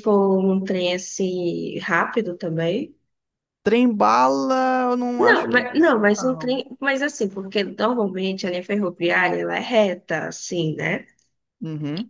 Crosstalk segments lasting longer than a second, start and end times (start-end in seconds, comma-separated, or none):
5.2-6.5